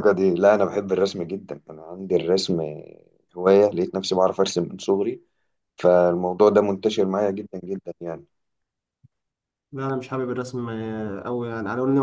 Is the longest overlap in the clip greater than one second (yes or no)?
no